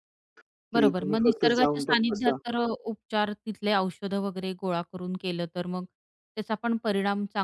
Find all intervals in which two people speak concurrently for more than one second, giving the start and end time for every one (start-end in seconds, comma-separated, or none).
0.7-2.4